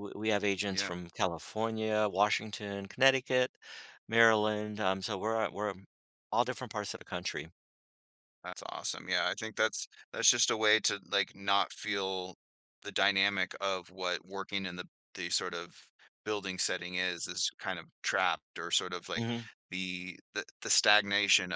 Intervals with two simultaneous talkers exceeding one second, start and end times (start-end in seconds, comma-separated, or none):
none